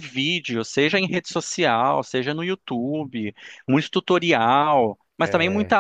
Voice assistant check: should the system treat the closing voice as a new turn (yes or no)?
no